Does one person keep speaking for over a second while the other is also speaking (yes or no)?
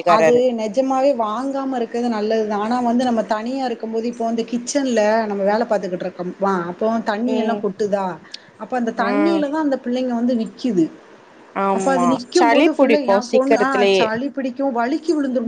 yes